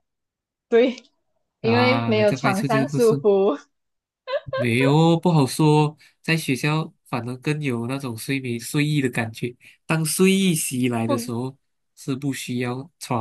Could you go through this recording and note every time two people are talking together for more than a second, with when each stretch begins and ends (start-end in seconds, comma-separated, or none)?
1.6-3.2